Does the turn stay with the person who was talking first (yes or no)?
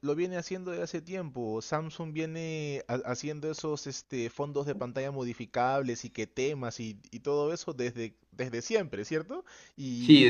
no